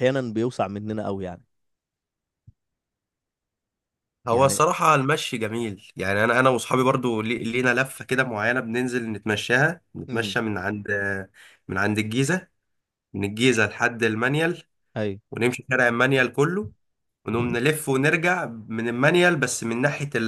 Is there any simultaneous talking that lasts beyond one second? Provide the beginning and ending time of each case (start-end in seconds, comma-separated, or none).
none